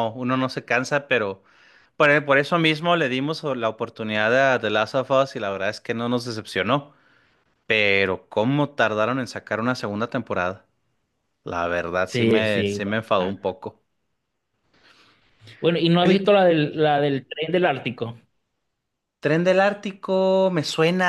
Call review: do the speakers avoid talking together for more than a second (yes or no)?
no